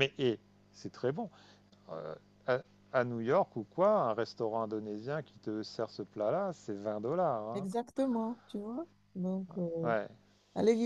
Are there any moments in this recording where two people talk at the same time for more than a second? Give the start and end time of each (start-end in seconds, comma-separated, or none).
none